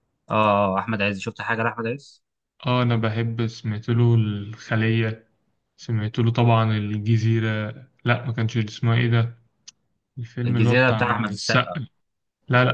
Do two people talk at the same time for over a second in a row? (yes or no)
yes